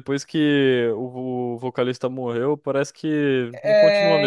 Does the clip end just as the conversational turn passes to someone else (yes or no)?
yes